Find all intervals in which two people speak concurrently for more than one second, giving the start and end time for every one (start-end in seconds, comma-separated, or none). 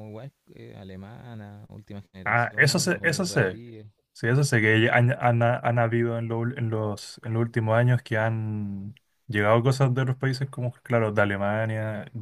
2.2-3.6